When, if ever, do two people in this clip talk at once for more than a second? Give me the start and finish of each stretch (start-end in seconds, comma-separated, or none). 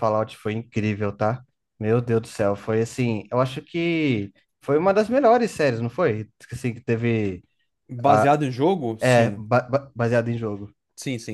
none